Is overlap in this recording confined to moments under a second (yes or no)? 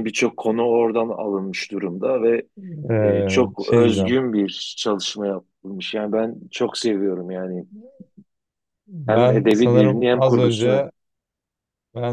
no